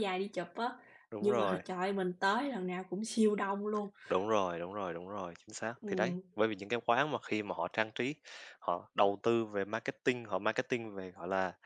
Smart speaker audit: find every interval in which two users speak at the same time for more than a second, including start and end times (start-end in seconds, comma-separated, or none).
none